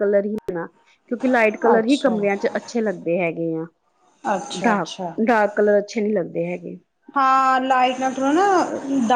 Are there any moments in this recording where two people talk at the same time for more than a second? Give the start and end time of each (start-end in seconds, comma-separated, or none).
none